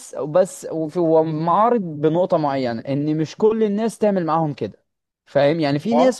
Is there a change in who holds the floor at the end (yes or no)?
no